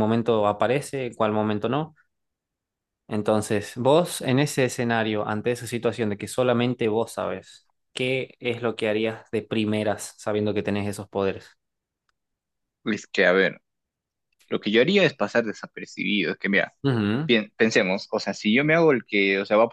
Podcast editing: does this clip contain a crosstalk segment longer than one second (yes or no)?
no